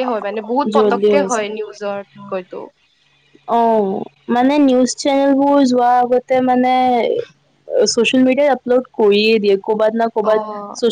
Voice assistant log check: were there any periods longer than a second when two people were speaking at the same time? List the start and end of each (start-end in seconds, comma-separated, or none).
0.8-2.6